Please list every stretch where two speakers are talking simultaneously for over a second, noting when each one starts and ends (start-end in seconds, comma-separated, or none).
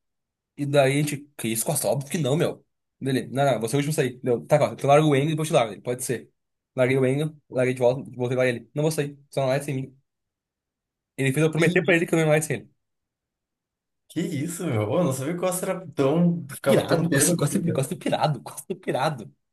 16.6-17.9